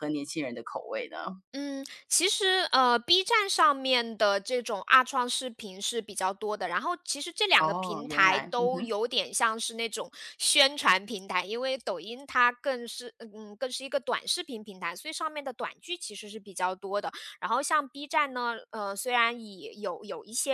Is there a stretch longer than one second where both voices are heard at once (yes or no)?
yes